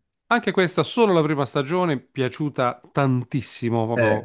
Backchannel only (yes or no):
yes